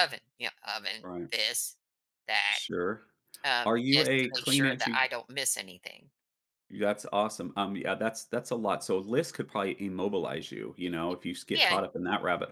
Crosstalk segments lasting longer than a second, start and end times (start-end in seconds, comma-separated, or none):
3.6-5.0